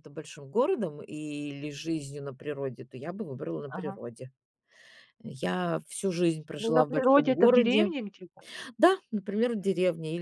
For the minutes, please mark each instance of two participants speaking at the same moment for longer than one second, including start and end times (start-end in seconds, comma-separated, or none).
6.6-7.9